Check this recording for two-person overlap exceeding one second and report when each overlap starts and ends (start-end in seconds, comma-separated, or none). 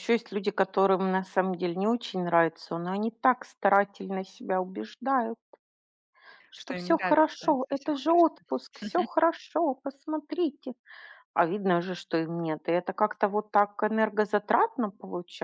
6.5-8.3